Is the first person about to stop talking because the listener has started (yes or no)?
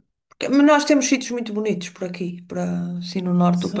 yes